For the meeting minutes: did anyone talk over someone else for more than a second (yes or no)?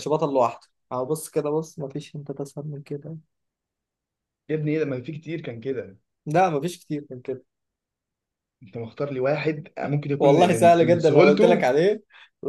yes